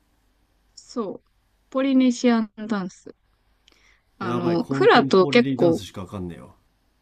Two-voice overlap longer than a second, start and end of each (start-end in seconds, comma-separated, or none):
4.2-5.8